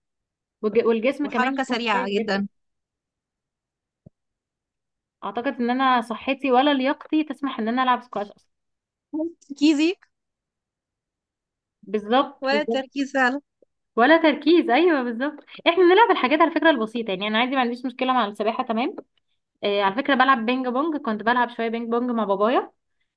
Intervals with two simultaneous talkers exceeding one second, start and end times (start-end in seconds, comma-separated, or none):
1.2-2.4